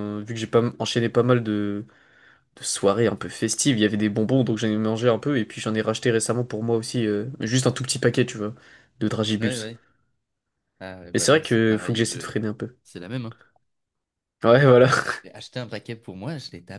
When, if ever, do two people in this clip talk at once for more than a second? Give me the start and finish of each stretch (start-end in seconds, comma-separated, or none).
11.1-12.3